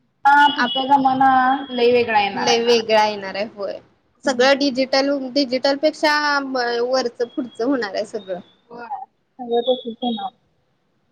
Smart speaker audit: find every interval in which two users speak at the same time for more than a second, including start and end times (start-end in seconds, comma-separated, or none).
none